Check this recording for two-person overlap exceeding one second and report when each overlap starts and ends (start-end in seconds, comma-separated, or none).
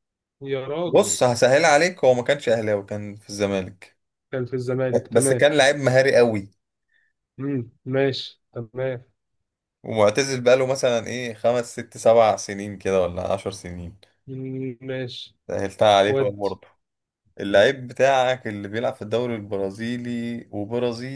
none